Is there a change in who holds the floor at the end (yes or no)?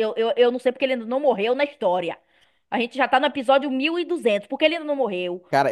yes